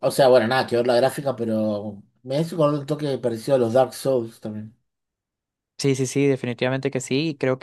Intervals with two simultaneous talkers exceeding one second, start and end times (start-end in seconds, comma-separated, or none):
none